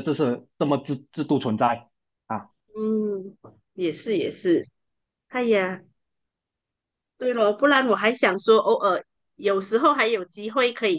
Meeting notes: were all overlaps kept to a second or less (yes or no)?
yes